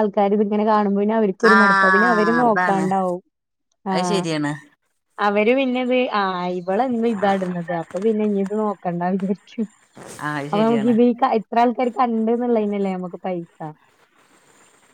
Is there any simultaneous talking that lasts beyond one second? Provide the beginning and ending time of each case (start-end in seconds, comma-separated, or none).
1.6-2.9